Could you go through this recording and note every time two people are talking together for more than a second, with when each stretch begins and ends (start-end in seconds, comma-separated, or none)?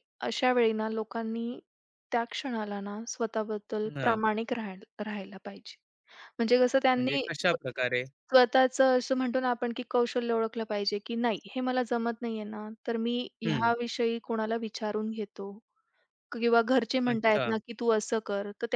none